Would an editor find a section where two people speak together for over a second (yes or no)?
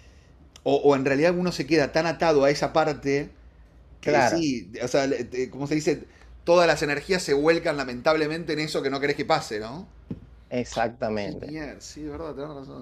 no